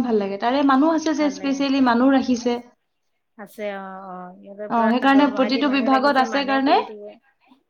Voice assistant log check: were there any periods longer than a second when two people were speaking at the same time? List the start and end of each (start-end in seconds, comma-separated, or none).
4.8-6.8